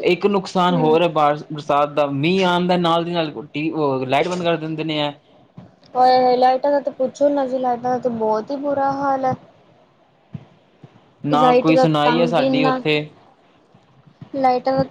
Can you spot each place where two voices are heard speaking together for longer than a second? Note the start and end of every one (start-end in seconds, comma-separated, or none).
11.4-12.8